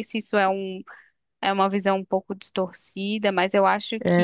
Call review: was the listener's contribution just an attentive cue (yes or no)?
no